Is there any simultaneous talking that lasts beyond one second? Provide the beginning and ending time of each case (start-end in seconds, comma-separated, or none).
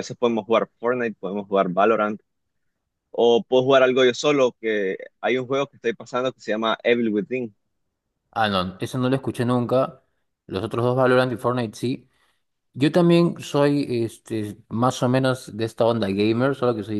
none